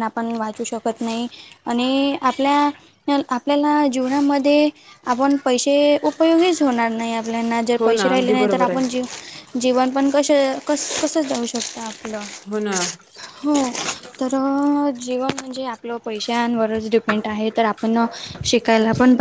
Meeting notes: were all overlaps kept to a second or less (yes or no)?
no